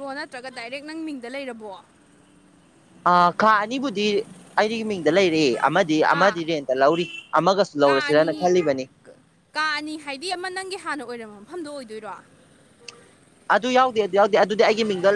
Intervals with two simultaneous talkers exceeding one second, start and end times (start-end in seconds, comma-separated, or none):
none